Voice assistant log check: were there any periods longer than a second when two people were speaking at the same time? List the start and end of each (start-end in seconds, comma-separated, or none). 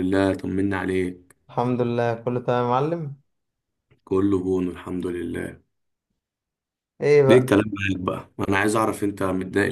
none